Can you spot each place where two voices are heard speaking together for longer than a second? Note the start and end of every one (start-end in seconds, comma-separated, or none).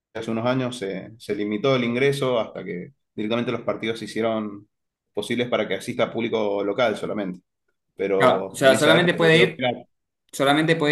8.2-9.7